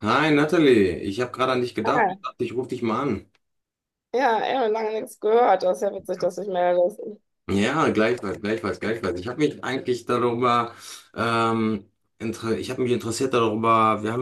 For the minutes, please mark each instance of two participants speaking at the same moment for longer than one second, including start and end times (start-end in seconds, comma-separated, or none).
none